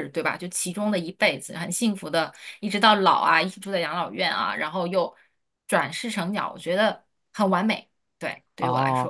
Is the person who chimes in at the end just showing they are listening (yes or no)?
no